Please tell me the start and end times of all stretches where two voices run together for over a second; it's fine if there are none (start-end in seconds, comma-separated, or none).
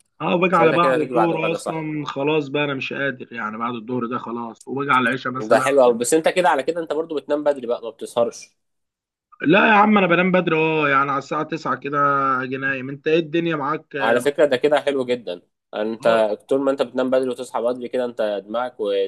0.5-1.9